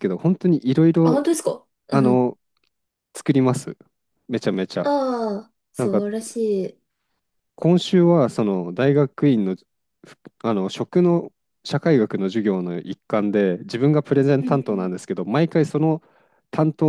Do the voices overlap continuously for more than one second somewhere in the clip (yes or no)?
no